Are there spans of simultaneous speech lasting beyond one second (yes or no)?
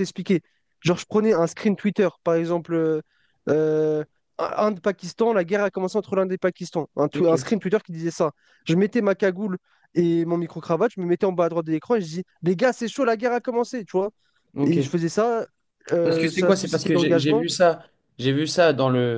yes